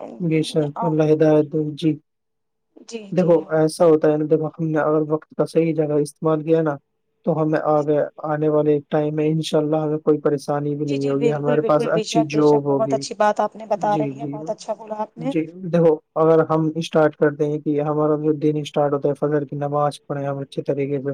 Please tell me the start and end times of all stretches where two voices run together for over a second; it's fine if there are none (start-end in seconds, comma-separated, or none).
10.9-13.0